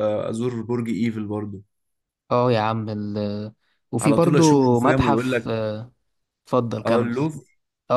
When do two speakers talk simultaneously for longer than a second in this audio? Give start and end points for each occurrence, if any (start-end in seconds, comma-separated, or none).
4.0-5.5